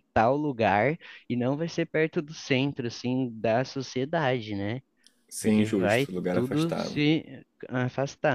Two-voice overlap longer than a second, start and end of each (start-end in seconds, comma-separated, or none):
5.4-7.0